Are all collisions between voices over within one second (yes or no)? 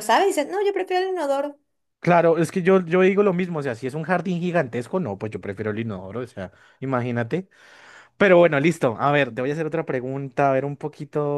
yes